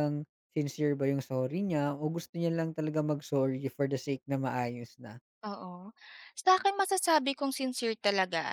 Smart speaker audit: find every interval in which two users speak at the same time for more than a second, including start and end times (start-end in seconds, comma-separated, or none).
none